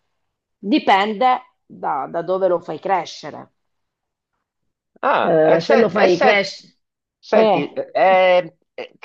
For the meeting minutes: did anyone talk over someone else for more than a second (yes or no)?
yes